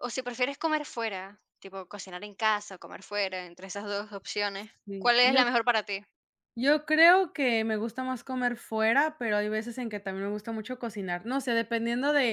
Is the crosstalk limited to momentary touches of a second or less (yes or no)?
yes